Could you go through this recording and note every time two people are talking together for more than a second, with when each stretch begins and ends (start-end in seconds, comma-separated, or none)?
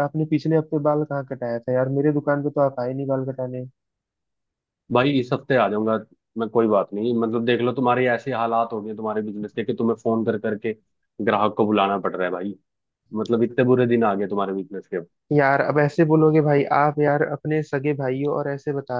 none